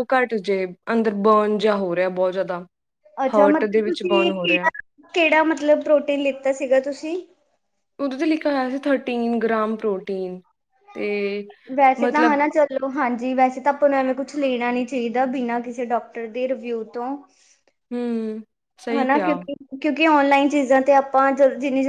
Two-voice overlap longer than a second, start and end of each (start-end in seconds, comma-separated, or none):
3.3-4.7